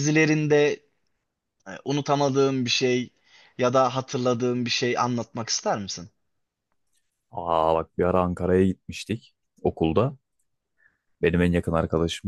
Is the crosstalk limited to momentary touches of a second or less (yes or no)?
yes